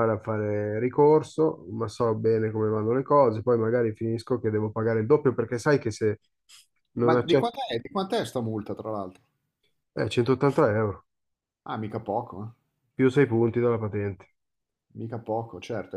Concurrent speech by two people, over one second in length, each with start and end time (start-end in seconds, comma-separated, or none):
none